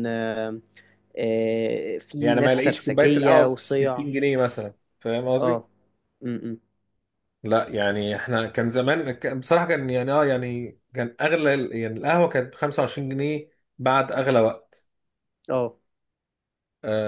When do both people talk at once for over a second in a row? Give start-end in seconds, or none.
2.2-4.0